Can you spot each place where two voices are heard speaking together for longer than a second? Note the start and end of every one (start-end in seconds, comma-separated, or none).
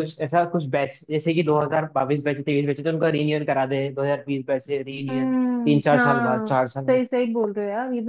5.1-7.0